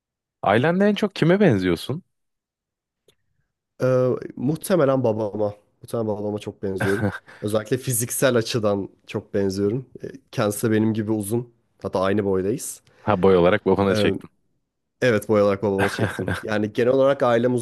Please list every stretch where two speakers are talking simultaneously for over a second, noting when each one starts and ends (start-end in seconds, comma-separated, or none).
none